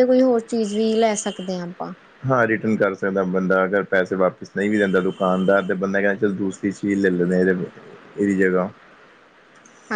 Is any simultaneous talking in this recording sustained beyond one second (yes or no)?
no